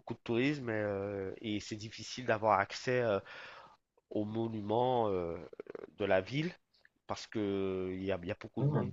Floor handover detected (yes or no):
no